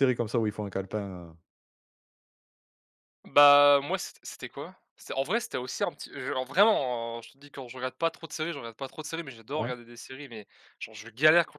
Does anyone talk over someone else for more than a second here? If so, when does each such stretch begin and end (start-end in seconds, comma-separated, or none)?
none